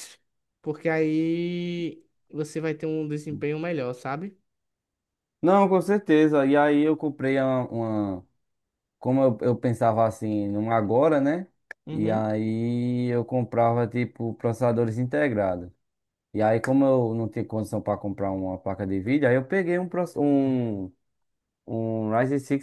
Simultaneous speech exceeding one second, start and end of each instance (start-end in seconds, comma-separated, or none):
none